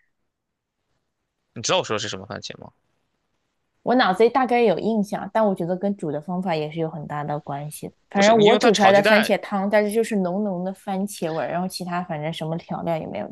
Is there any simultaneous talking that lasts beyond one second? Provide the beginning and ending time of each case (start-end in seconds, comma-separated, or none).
8.1-9.3